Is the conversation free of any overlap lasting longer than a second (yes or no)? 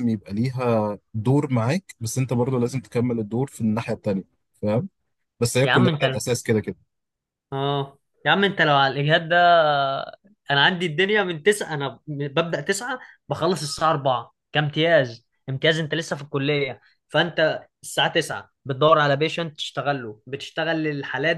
yes